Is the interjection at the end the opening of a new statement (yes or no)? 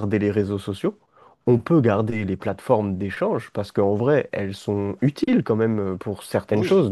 no